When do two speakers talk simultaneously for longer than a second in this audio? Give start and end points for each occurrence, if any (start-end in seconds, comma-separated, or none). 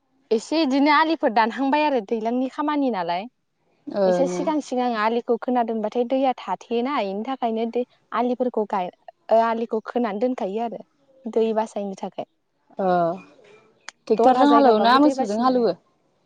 14.2-15.8